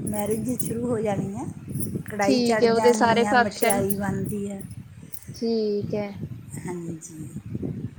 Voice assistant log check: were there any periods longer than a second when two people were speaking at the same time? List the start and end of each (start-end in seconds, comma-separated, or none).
2.2-3.8